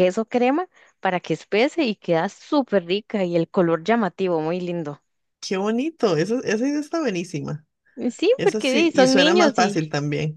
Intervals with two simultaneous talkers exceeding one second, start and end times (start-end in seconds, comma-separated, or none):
8.3-9.8